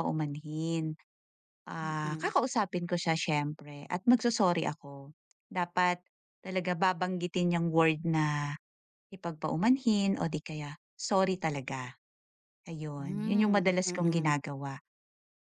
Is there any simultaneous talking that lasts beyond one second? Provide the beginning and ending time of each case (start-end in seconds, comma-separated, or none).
13.0-14.3